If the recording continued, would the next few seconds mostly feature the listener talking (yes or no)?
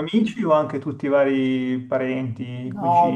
yes